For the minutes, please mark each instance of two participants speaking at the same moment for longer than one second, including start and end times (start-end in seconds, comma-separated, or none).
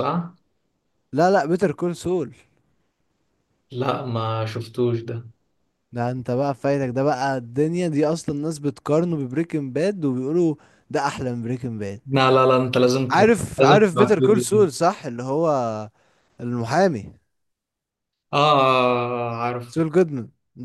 13.1-14.7